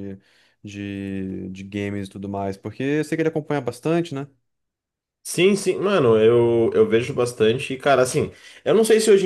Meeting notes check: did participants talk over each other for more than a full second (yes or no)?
no